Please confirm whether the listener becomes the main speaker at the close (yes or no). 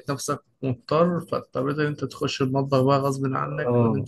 yes